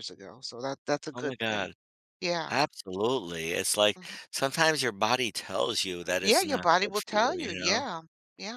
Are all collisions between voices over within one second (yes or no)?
no